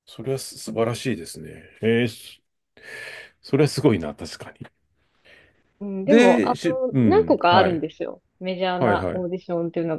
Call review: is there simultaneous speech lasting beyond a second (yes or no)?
yes